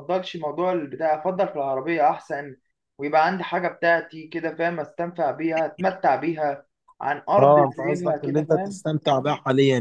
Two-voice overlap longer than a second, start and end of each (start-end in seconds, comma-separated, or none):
7.4-8.8